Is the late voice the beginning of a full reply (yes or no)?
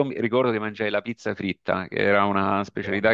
no